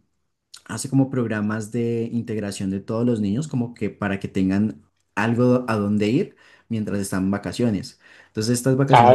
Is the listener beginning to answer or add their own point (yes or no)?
yes